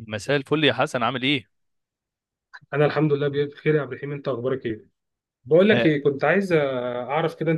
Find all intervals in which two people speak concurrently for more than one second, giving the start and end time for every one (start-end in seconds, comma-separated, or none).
none